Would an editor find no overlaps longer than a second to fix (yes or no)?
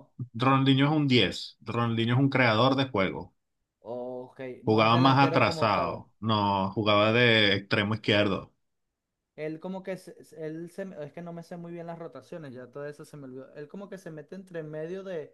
no